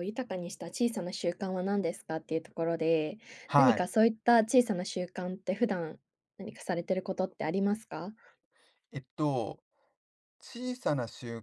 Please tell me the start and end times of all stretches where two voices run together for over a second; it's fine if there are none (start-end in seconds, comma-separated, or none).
none